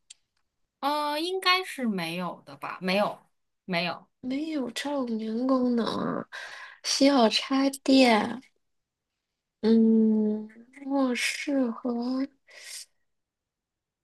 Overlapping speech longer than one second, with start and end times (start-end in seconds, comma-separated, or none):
none